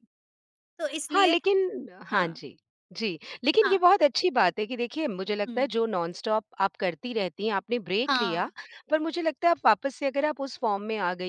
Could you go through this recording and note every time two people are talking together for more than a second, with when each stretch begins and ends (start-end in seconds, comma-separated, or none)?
none